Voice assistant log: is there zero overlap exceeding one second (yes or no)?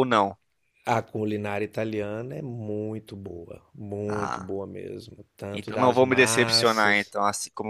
no